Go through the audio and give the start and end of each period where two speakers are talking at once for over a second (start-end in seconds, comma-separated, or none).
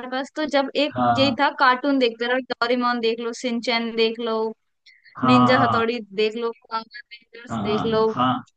none